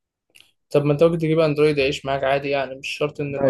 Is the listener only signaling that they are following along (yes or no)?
no